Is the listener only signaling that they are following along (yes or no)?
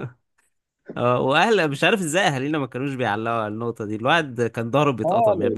no